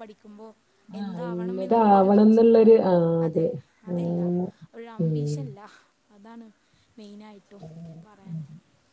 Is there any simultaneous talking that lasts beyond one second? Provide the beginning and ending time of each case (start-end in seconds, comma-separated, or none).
1.0-2.6